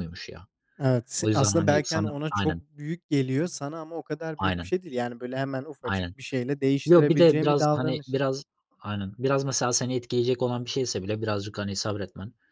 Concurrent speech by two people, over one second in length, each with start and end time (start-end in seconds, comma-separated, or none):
1.2-2.6, 6.9-8.2